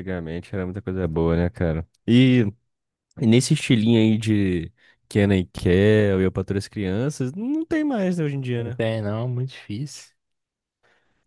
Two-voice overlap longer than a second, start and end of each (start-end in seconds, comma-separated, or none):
none